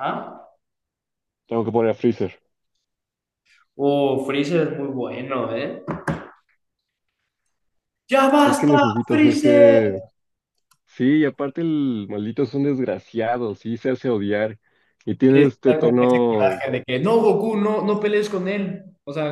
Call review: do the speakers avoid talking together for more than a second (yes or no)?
no